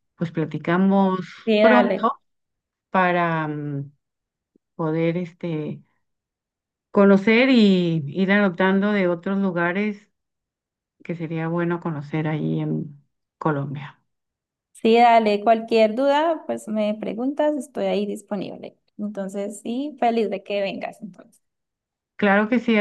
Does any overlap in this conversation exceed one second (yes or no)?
no